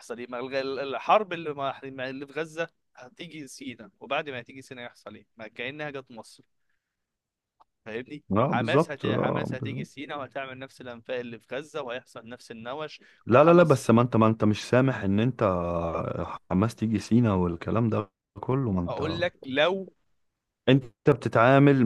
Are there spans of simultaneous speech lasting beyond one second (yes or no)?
yes